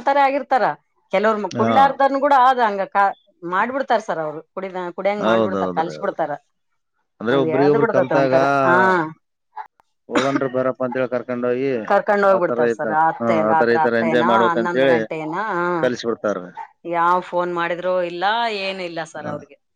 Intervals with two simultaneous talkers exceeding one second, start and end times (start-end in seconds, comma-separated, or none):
12.4-14.9